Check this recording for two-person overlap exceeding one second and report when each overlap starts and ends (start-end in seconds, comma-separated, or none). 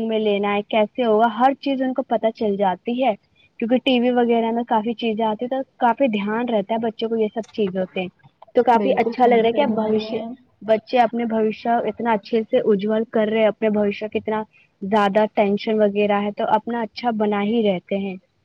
8.8-10.2